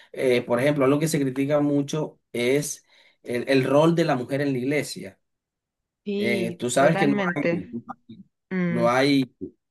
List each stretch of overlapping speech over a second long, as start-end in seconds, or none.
6.2-7.7